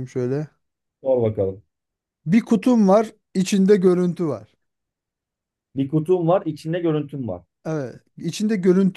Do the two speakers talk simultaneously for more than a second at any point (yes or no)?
no